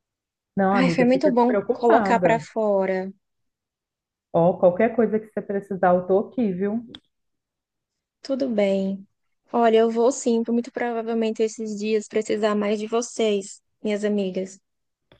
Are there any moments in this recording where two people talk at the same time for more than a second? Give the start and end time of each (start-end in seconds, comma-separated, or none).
0.8-2.5